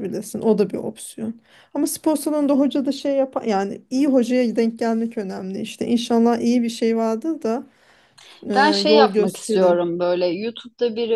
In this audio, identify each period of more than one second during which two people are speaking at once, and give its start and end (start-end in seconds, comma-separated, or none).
8.6-9.9